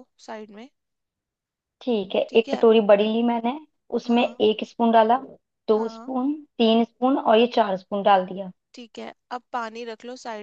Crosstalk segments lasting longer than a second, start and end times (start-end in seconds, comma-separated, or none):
none